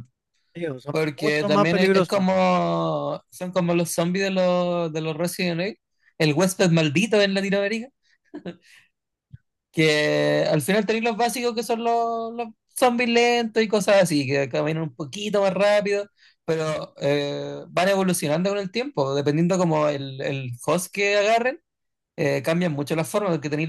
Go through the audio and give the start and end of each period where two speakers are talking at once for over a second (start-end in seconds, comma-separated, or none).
0.9-2.3